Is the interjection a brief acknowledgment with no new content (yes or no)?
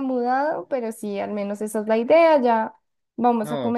yes